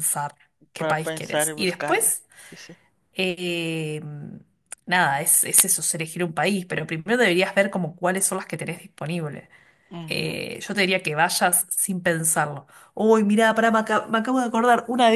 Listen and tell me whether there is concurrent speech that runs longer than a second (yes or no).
yes